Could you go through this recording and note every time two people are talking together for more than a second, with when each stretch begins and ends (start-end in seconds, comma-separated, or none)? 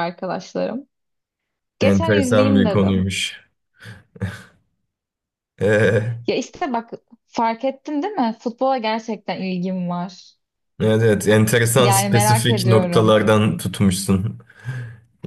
1.8-3.1, 11.8-13.2